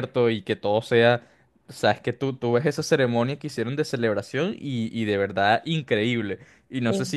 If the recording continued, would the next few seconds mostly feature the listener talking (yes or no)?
no